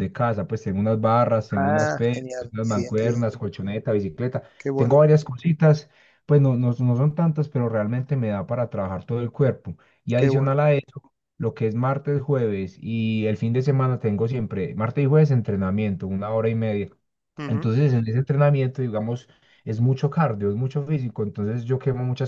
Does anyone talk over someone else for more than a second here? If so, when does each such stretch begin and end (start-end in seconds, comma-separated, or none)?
1.6-3.2